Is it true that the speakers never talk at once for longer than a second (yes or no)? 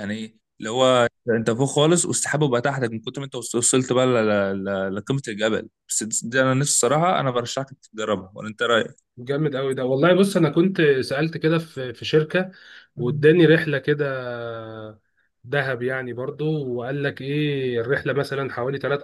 yes